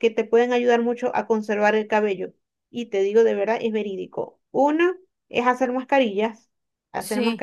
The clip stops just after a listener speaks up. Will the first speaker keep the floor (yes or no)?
yes